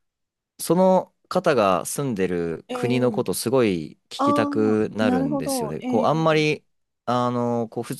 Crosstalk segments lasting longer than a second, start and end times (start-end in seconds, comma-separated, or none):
4.2-6.5